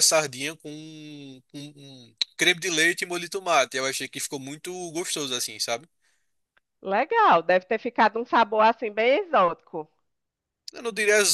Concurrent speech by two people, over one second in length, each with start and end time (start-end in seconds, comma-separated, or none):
none